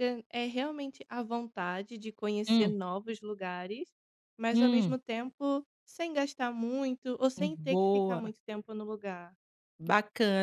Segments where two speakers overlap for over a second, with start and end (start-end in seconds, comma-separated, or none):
none